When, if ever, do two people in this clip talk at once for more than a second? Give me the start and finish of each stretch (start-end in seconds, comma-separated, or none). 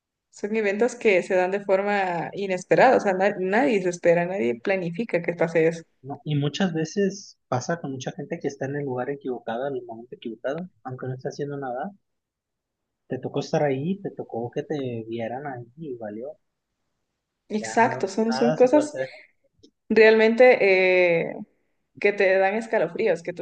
17.6-18.9